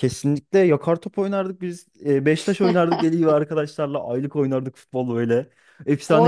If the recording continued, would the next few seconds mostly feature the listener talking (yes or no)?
yes